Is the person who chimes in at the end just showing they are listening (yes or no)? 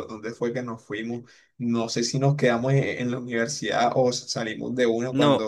no